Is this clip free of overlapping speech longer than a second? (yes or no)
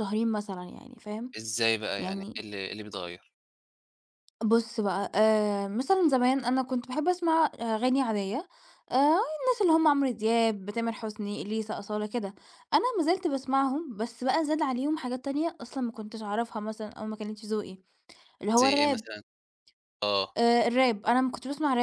yes